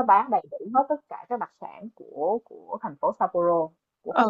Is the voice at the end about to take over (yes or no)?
yes